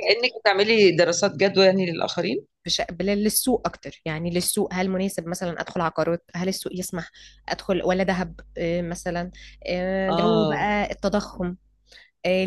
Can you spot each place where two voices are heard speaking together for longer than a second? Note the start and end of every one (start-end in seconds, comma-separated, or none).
none